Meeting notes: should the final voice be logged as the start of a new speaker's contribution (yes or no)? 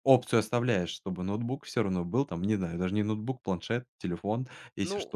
yes